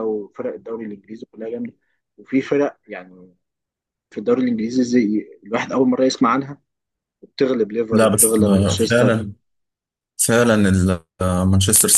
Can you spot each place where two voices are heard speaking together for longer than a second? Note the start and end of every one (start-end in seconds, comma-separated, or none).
7.9-9.3